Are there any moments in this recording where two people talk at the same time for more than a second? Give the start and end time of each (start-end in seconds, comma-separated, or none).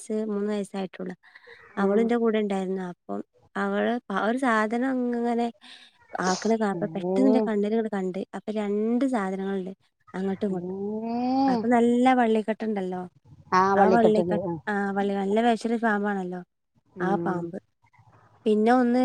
none